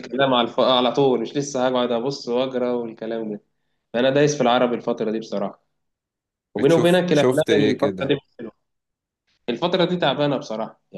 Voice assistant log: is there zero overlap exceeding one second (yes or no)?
no